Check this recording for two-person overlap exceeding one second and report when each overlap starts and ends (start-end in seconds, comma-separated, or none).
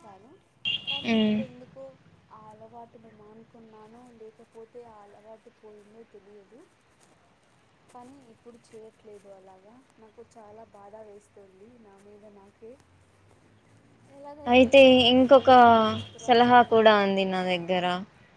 16.3-17.8